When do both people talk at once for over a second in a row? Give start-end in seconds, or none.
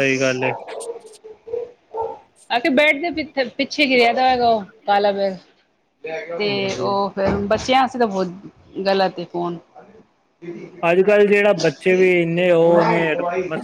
none